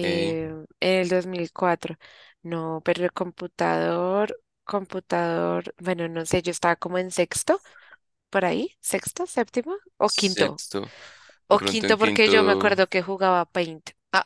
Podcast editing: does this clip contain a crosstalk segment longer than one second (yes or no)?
yes